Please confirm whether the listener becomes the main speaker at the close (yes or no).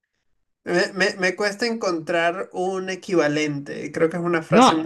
yes